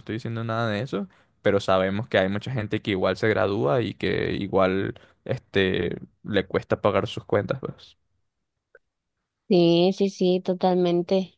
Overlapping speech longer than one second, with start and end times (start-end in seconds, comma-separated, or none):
none